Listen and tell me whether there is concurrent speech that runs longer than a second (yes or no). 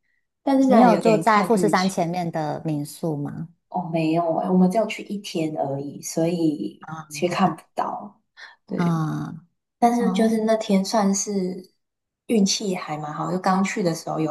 yes